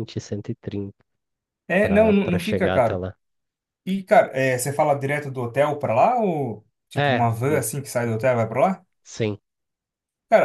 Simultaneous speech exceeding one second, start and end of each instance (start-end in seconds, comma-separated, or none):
1.8-3.0